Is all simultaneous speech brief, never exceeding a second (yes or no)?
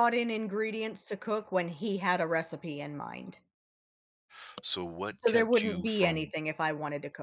no